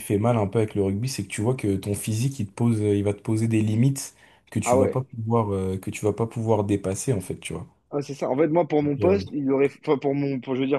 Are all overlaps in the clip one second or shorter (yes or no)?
yes